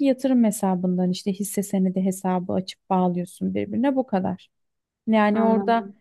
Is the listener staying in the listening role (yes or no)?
yes